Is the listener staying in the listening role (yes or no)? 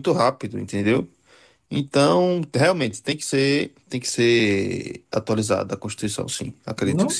no